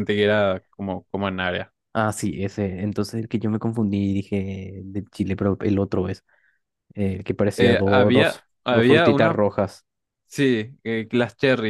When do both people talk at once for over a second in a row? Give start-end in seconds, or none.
7.6-9.4